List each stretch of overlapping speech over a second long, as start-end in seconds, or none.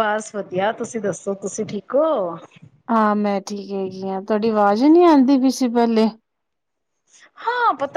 none